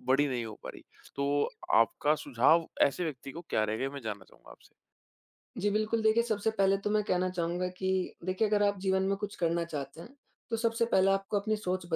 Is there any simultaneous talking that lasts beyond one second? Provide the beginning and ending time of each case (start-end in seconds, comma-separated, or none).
none